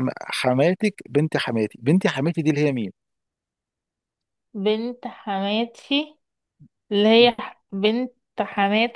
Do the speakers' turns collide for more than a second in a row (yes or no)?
no